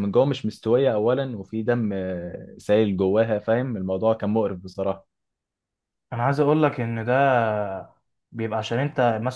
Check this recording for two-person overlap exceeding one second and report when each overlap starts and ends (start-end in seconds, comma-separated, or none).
none